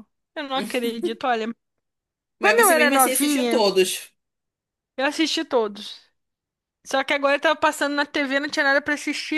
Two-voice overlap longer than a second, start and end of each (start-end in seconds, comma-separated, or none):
2.4-3.7